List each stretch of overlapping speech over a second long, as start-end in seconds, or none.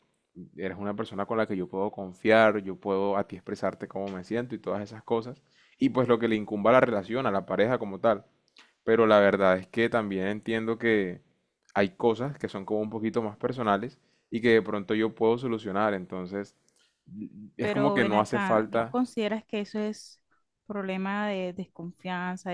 17.6-19.0